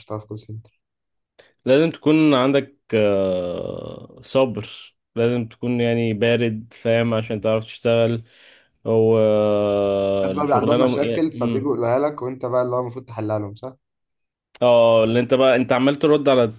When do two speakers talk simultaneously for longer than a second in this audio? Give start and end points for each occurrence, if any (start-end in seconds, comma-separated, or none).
10.3-11.8